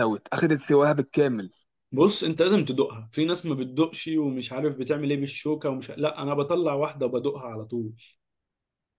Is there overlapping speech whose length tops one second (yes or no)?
no